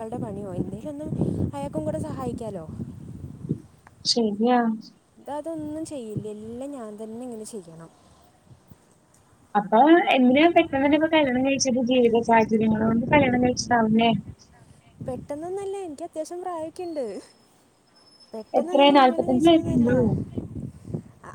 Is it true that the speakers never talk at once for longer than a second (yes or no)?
no